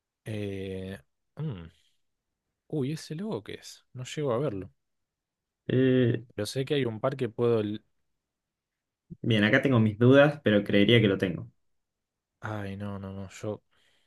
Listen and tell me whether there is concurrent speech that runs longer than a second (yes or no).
no